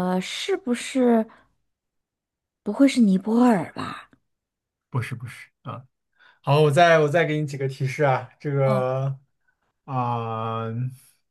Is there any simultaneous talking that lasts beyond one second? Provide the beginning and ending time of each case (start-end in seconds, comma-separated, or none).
none